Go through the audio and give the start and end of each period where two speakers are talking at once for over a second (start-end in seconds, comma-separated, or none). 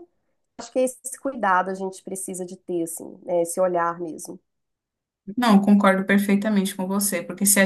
none